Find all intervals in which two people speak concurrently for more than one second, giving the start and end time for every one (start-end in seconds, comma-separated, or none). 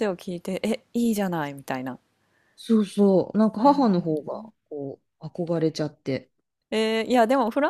none